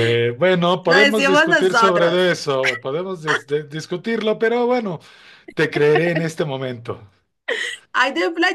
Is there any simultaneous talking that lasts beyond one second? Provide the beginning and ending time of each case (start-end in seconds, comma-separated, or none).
0.8-2.2